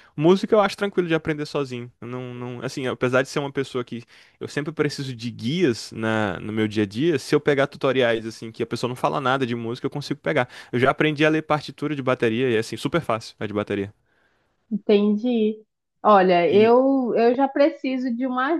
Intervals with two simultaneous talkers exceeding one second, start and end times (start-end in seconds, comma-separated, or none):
none